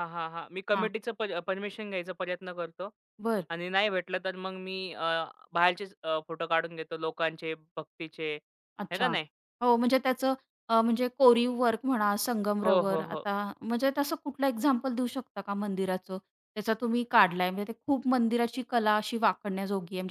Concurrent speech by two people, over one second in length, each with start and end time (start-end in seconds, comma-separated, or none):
none